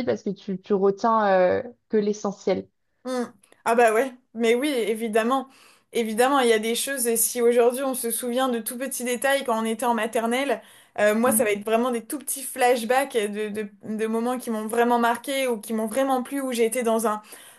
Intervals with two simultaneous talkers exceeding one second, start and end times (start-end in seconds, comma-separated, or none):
none